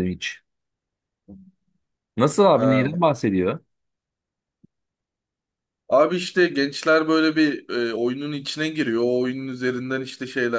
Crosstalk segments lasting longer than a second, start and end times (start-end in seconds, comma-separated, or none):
none